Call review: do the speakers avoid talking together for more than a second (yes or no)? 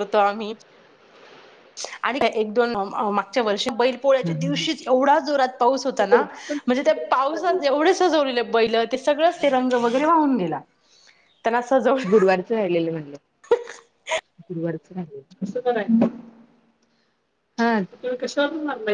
no